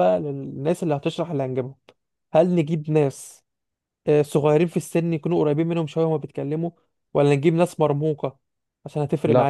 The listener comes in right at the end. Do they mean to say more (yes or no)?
yes